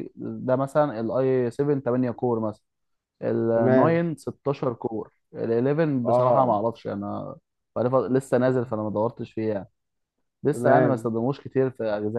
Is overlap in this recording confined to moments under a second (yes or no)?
yes